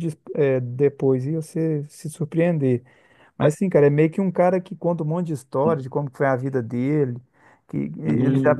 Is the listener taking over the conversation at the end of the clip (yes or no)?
no